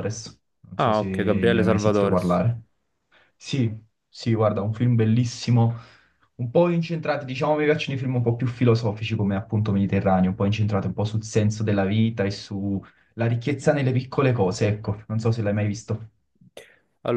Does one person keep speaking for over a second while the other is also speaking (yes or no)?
yes